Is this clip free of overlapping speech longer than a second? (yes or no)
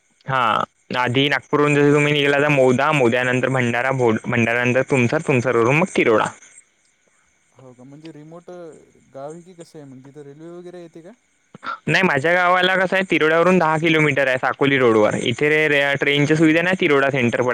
yes